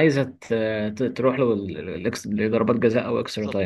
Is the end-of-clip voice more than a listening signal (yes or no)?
yes